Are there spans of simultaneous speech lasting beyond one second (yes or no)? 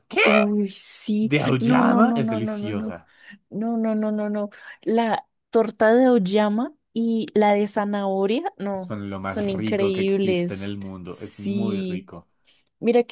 yes